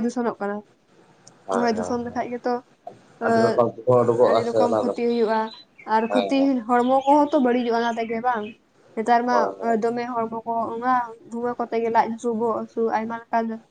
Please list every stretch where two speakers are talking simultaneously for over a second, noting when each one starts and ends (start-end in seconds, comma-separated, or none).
3.3-4.9